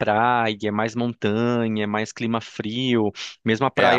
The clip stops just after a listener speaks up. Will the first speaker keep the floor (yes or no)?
yes